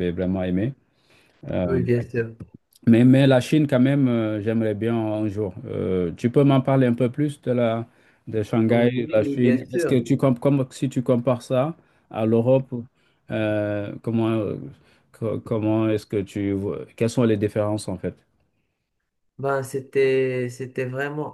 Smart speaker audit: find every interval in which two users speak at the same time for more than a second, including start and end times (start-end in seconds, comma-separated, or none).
8.7-10.0